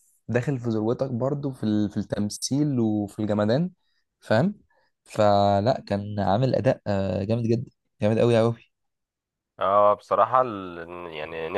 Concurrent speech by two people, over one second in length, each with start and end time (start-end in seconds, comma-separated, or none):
none